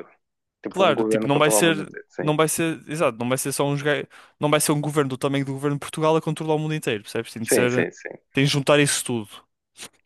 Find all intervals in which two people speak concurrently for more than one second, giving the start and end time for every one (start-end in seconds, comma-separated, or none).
0.7-2.3